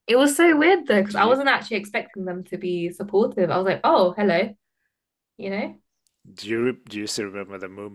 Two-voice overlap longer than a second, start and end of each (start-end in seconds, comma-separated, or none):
none